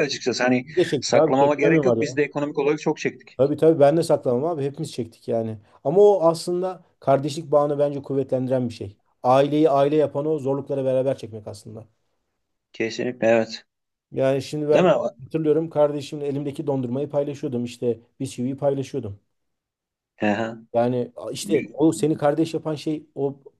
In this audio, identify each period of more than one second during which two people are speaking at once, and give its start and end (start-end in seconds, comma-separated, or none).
0.6-2.0